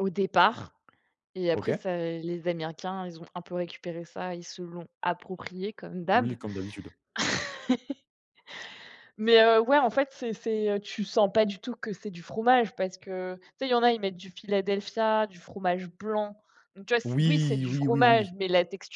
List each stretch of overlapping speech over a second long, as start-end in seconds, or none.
17.0-18.3